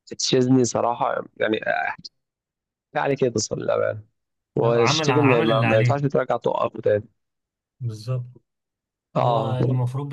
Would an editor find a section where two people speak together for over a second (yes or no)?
yes